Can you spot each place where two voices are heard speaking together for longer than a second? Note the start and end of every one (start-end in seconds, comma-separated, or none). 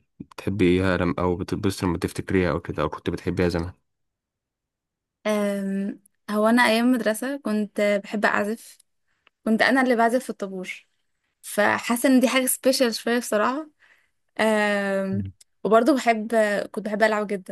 none